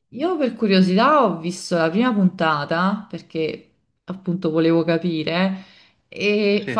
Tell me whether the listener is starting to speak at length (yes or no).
no